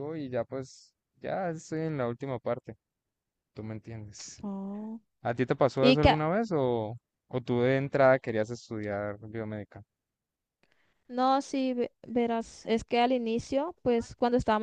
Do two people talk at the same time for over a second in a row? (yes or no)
no